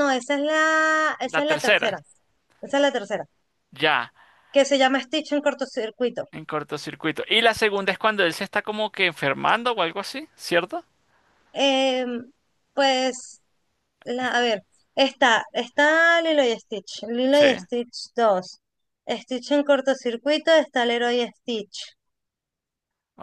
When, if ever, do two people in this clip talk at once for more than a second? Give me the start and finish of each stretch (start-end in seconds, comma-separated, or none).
none